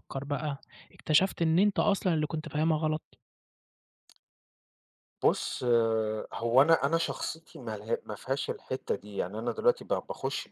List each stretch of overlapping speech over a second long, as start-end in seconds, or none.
none